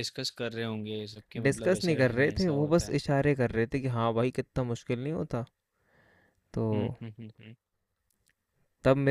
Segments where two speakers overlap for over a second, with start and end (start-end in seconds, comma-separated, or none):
1.4-3.0